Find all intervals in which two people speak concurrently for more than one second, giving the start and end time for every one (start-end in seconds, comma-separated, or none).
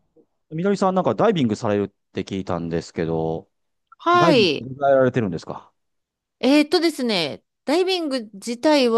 none